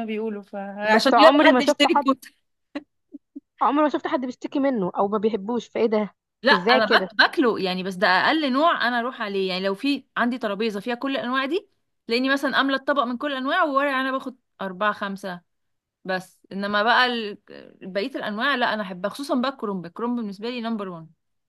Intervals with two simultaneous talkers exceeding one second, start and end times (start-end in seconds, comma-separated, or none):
0.9-2.1